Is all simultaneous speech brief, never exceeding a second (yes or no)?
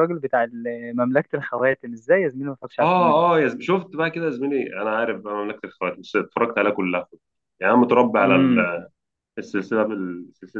yes